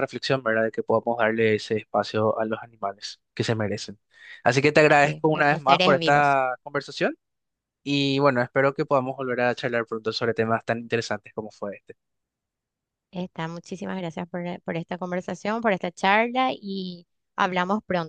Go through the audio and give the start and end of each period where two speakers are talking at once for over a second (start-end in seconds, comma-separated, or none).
5.0-6.4